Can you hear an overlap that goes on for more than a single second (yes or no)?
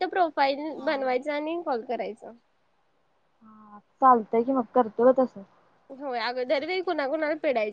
no